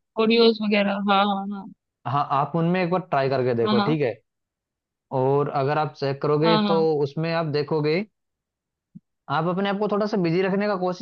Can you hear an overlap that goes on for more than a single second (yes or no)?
no